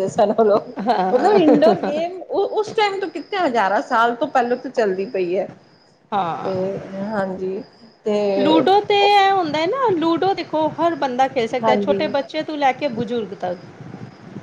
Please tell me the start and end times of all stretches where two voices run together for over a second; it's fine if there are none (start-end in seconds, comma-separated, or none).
none